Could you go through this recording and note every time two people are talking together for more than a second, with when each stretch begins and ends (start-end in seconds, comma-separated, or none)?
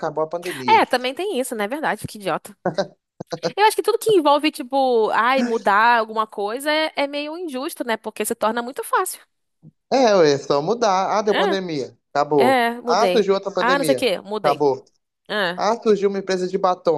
12.4-14.7